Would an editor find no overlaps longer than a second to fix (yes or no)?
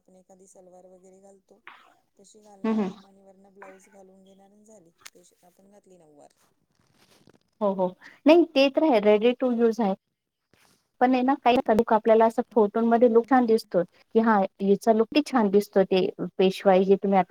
yes